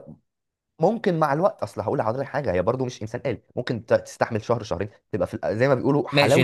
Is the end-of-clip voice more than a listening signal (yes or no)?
yes